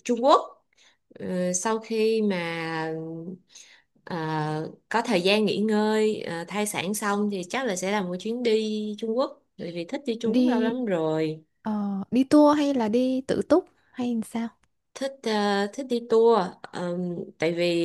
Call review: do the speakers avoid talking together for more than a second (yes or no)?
yes